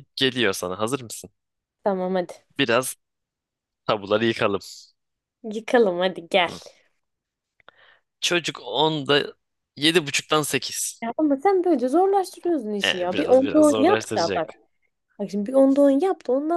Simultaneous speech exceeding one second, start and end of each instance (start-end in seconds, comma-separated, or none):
12.8-14.5